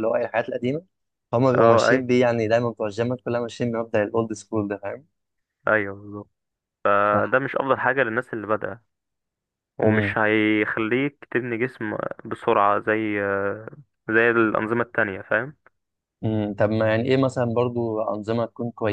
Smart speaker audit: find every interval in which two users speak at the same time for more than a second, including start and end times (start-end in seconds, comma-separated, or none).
none